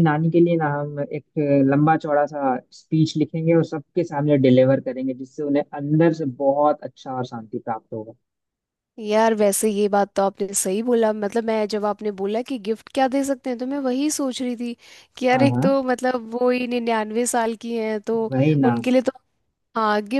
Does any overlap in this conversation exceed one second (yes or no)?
no